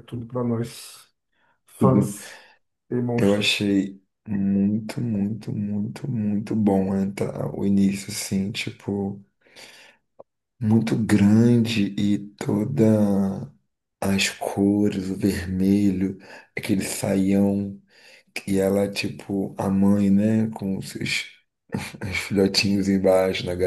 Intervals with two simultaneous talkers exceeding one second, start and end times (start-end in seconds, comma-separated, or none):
none